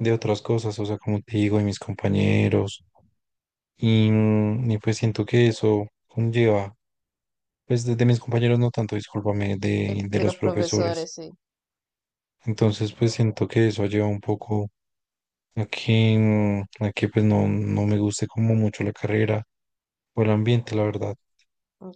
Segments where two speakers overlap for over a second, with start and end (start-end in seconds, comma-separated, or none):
9.9-11.1